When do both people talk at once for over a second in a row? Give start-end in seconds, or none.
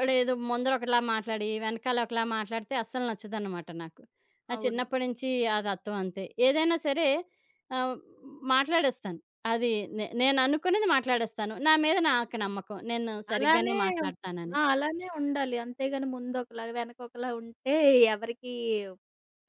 none